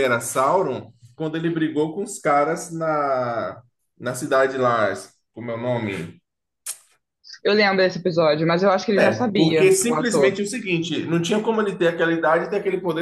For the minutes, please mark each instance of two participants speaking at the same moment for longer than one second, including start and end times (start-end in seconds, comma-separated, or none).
8.9-10.3